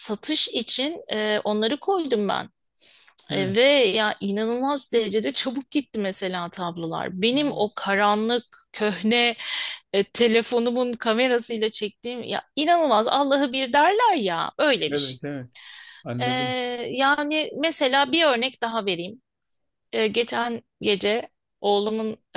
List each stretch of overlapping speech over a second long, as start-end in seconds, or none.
none